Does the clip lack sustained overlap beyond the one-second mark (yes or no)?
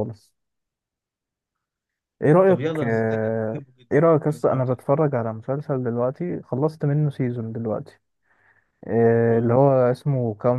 no